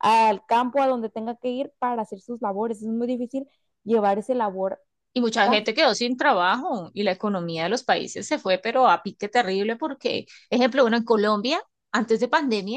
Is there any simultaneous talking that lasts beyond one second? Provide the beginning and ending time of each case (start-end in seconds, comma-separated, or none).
none